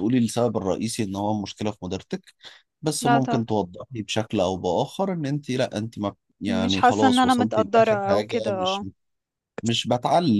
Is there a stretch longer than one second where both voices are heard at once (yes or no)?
yes